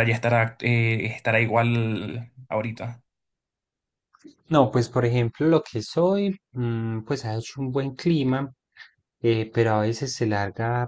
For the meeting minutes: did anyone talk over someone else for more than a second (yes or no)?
no